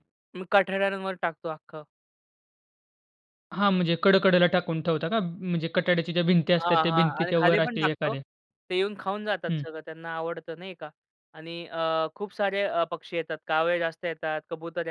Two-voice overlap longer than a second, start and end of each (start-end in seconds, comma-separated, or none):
6.6-8.1